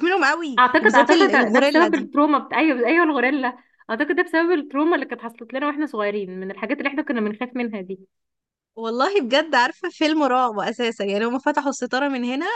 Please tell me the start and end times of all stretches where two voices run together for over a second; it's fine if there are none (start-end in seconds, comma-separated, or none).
0.6-2.1